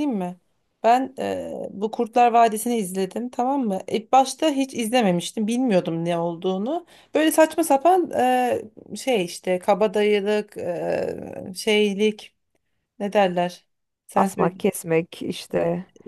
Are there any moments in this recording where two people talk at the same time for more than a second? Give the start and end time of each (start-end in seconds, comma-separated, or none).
none